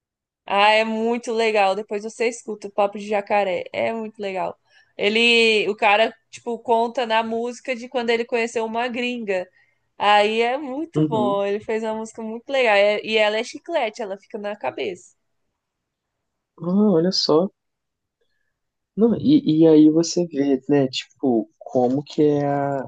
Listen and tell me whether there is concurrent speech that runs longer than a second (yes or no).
no